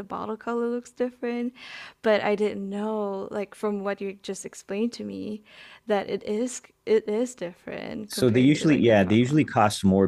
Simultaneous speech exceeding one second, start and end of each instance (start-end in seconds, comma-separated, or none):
8.1-9.4